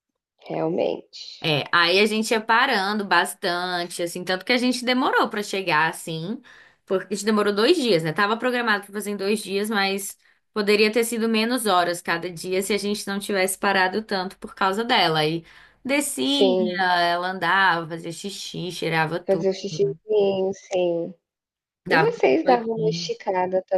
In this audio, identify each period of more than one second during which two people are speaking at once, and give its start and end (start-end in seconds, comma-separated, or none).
21.9-23.1